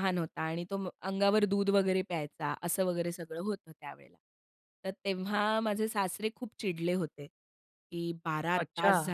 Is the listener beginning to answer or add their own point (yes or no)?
no